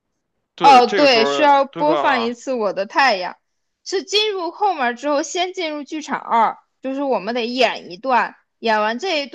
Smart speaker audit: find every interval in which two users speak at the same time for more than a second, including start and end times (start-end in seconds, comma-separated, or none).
0.6-2.4